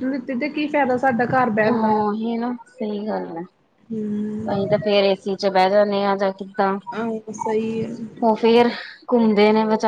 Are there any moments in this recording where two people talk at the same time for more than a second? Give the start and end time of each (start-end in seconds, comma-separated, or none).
none